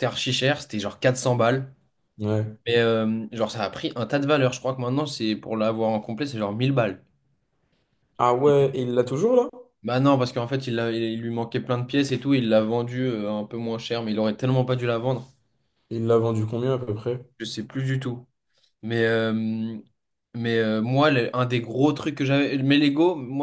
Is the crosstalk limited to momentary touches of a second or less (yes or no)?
yes